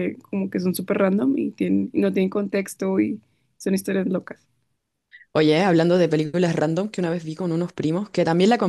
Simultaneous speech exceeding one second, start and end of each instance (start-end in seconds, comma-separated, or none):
none